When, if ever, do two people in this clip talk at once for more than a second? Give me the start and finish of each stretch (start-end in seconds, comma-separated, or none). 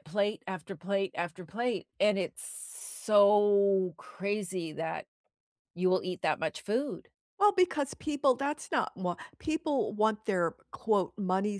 none